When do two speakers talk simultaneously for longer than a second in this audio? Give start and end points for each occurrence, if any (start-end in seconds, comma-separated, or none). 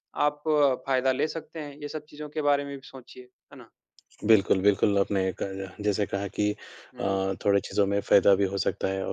none